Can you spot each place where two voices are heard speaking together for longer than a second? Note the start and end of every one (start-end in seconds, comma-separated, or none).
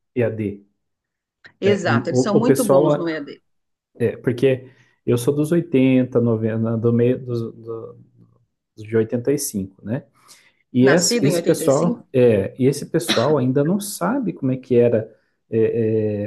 1.6-3.0, 10.8-12.0